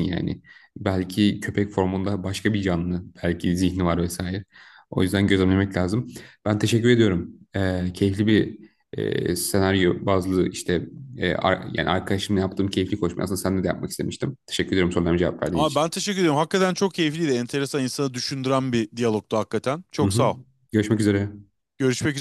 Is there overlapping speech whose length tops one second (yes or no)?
no